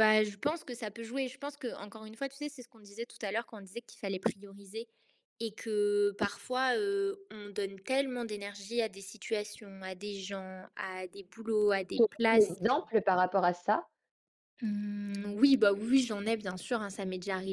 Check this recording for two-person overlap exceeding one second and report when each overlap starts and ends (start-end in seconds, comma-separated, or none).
none